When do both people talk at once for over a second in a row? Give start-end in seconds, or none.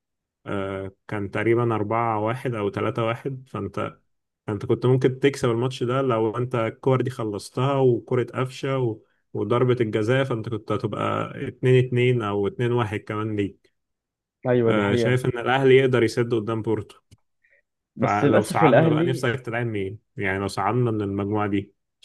18.0-19.3